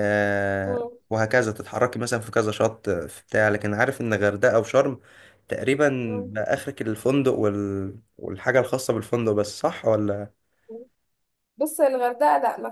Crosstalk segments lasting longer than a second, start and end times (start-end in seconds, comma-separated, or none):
none